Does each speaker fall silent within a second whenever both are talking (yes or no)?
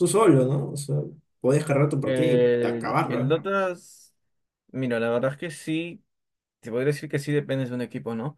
no